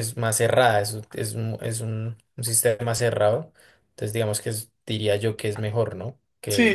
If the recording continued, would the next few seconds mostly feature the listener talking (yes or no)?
yes